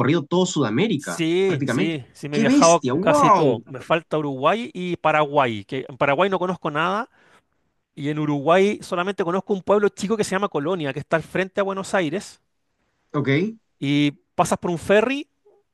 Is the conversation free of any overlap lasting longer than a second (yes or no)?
no